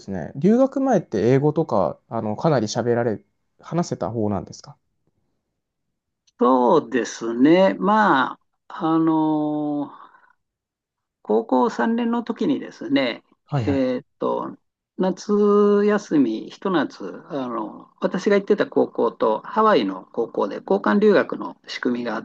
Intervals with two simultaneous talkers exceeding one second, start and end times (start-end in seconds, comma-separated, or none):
none